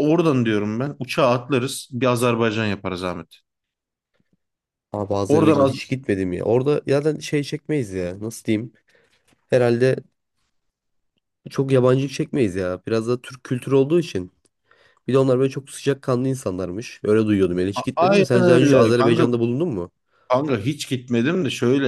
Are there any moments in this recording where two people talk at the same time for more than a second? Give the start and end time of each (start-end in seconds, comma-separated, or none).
18.0-19.3